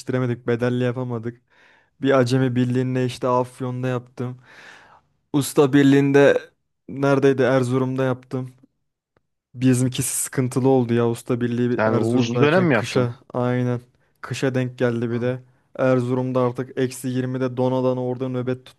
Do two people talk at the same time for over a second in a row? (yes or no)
yes